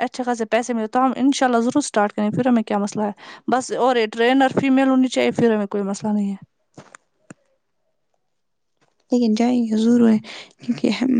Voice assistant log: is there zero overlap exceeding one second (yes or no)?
yes